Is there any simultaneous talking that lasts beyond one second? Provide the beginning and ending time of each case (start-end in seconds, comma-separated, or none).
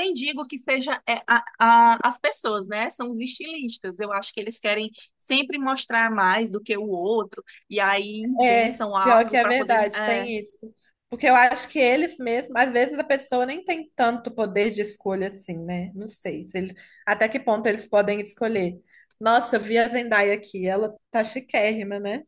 8.4-10.3